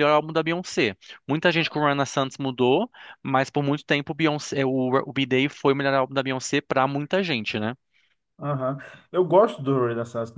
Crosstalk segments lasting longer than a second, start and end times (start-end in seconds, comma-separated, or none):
none